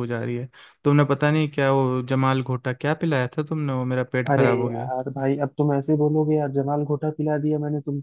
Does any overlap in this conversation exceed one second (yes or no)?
no